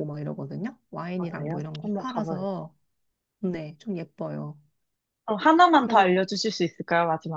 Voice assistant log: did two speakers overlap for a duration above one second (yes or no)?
yes